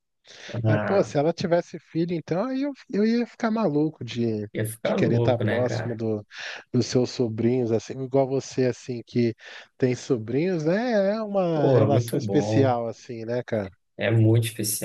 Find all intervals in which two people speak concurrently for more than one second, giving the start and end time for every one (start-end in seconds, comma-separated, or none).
4.8-6.0, 11.5-12.8